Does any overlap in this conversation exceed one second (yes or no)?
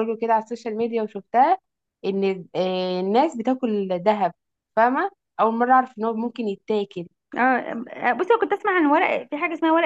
no